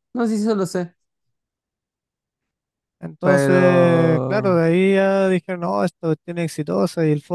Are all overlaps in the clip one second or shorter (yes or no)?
no